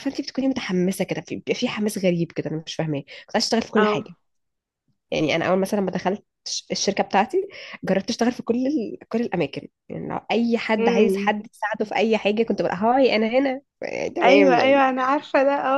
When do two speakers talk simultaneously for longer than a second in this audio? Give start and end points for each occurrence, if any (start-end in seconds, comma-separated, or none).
none